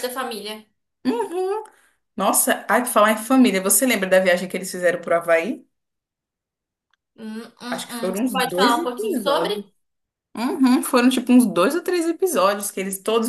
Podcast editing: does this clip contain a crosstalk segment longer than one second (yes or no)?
yes